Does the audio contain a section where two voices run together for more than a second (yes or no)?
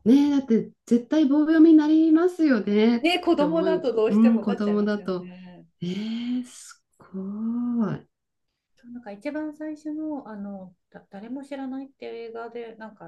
yes